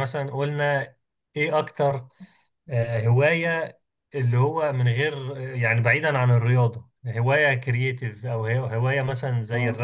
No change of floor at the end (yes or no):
yes